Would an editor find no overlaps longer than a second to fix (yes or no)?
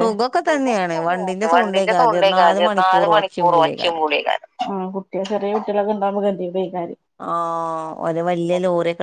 no